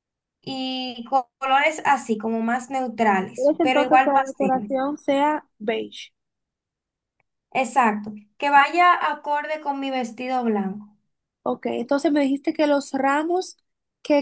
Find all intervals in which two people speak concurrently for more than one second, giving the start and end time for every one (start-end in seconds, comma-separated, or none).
3.3-4.8